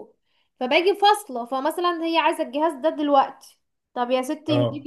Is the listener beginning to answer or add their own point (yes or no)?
no